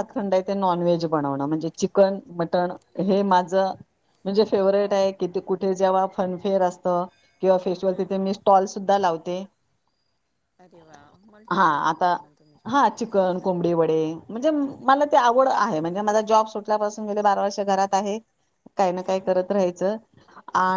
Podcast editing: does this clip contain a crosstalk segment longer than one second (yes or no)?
no